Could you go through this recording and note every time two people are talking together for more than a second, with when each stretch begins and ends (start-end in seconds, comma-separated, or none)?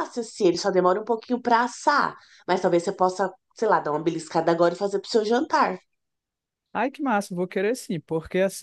none